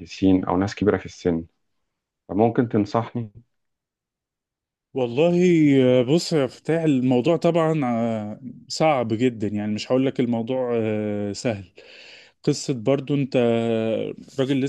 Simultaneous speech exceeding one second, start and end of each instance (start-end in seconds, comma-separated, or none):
none